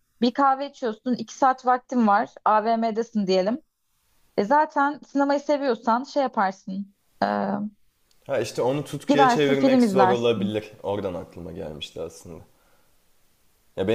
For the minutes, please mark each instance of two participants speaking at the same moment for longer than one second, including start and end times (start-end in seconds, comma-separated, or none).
9.1-10.6